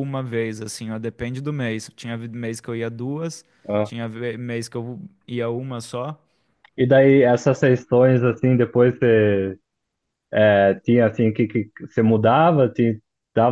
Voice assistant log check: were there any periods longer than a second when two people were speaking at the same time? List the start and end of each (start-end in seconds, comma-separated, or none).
none